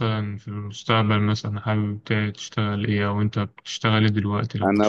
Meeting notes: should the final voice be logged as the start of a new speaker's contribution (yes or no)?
yes